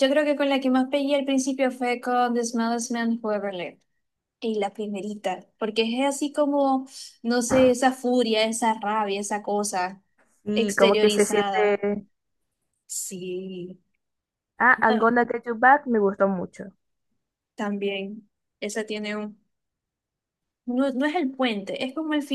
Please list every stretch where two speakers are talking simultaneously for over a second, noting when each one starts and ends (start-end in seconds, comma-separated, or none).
10.5-11.8